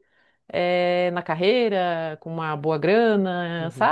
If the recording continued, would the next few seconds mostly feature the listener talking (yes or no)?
yes